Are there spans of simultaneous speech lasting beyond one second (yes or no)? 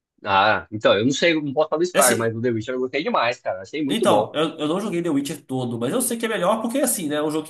no